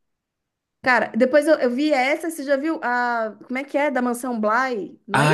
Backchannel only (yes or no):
no